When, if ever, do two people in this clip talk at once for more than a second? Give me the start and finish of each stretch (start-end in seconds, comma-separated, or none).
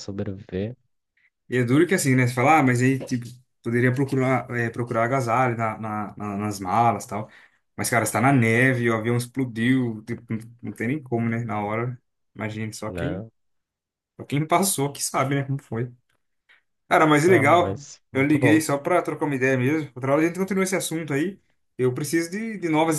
16.9-18.6